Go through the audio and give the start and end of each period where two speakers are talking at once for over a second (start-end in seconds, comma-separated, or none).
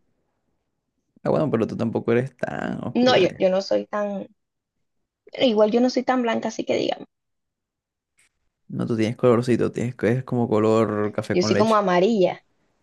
none